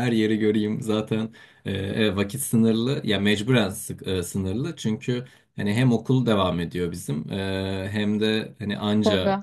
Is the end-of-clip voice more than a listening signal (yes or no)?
no